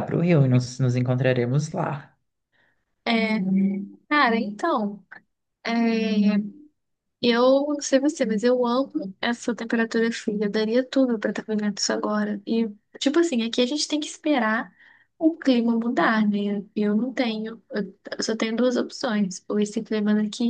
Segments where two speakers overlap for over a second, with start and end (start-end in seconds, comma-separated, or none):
none